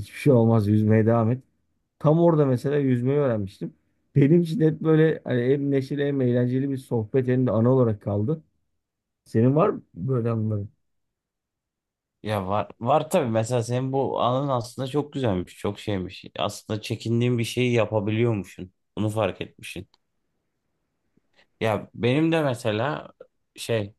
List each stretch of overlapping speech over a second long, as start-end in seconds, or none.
none